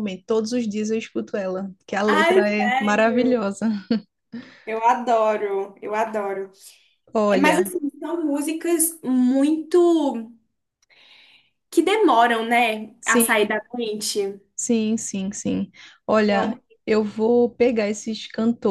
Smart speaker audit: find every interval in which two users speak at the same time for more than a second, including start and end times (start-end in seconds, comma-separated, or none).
2.1-3.4